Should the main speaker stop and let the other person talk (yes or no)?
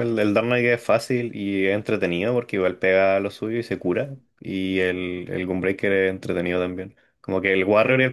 no